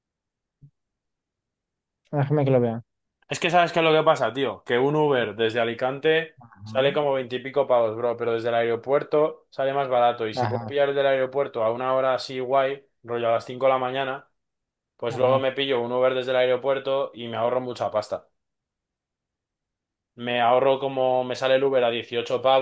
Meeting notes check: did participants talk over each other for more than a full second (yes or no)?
no